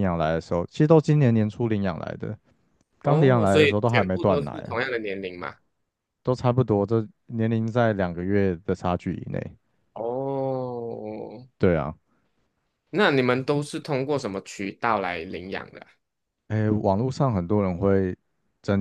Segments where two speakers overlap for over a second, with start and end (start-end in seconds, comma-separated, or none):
3.0-4.8